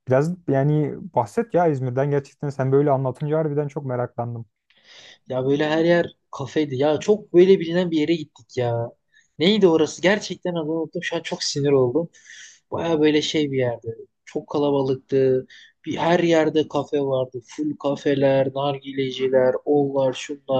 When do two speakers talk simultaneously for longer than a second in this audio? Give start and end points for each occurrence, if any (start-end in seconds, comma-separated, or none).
none